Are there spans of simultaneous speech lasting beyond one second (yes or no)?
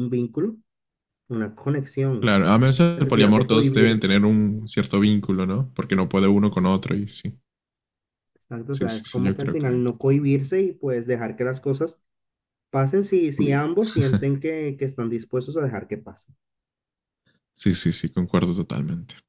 yes